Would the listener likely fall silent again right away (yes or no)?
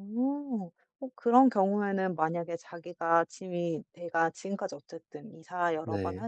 yes